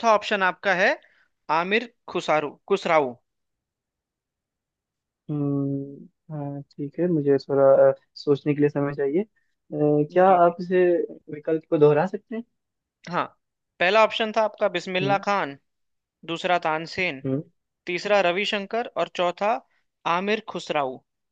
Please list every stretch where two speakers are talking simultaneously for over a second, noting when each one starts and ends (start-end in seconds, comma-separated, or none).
none